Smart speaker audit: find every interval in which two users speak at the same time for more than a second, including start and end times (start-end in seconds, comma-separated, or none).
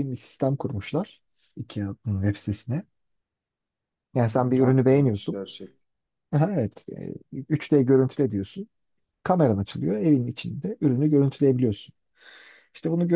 4.2-5.4